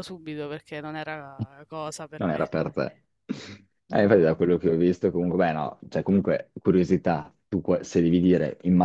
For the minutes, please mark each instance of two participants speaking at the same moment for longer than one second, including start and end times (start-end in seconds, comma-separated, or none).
none